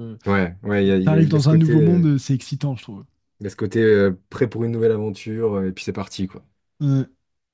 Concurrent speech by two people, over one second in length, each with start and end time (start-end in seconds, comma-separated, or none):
0.8-2.1